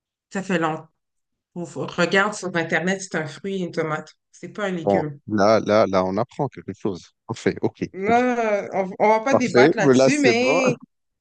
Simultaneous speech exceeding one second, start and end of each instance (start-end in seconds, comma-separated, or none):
9.3-10.6